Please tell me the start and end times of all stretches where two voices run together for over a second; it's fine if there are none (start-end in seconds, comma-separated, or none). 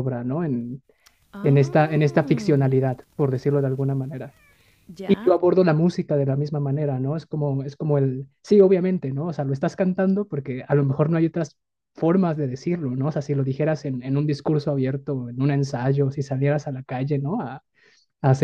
1.4-2.7